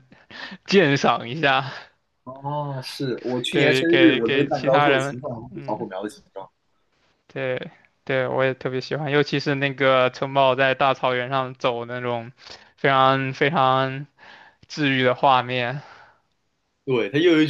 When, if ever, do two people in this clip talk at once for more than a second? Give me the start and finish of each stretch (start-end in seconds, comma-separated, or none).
3.5-5.9